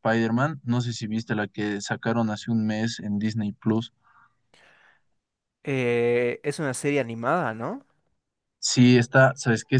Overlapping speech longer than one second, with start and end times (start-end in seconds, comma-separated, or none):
none